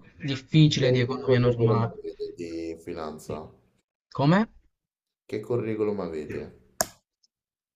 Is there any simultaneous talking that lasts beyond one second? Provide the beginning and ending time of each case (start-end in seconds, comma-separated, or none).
0.8-2.0